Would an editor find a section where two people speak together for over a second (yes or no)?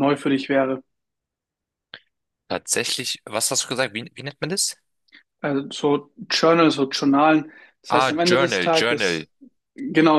yes